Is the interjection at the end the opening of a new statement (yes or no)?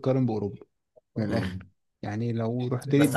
yes